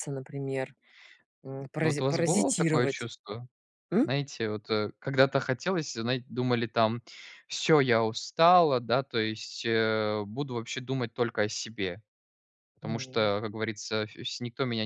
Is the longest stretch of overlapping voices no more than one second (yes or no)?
no